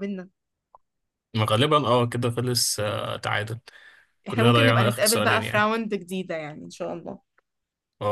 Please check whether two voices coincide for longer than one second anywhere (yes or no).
yes